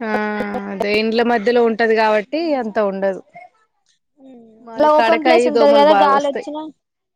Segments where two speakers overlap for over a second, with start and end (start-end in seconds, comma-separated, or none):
4.8-6.5